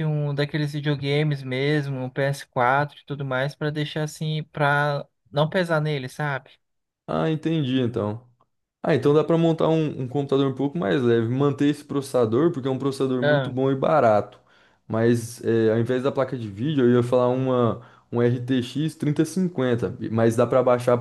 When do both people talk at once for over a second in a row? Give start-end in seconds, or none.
none